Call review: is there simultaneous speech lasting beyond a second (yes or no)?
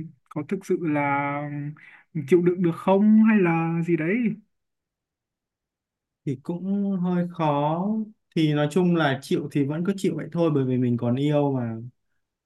no